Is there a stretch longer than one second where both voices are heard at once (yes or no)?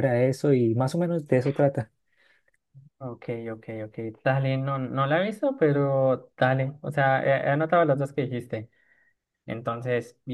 no